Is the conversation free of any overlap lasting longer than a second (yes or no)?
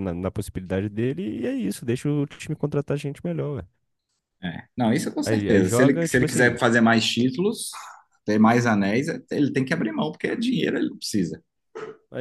no